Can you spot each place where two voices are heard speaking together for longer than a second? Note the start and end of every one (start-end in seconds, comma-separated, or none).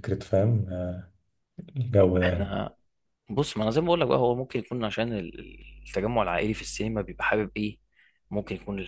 none